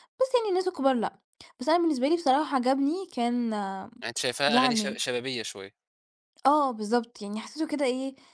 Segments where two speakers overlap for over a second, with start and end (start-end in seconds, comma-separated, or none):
none